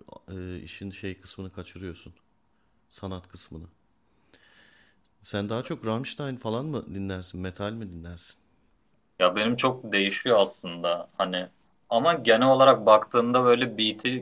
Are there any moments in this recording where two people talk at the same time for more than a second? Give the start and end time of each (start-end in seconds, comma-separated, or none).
none